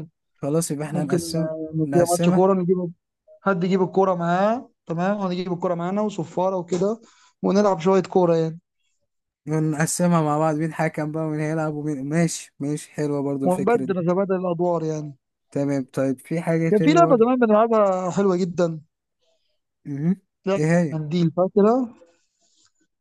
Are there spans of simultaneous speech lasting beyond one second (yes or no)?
yes